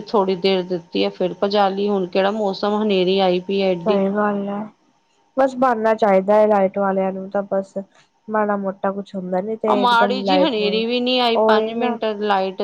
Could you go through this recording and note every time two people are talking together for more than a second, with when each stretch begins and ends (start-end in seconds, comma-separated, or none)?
9.7-12.0